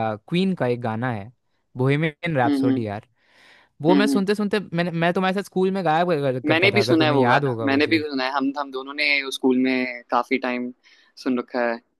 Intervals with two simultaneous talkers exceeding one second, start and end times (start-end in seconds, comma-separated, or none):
6.5-8.0